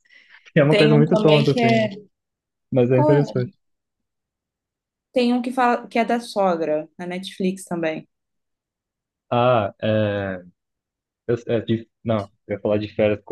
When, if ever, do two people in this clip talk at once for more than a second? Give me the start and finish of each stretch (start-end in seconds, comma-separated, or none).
0.7-1.9